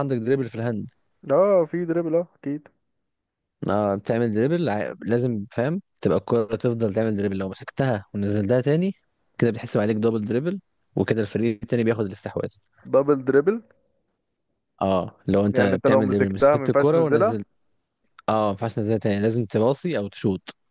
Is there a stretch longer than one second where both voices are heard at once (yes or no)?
yes